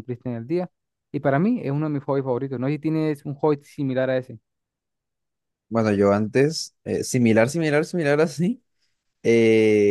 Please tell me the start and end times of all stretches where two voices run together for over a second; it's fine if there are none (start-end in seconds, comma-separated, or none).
none